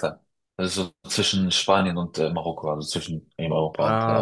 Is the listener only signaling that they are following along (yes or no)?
no